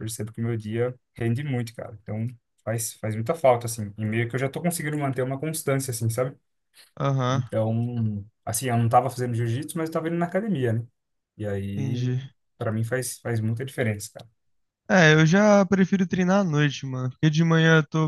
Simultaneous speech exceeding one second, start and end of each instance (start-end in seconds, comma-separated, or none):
none